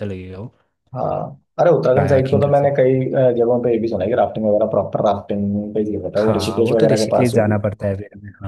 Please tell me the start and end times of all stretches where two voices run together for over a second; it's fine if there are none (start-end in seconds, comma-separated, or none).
6.2-7.6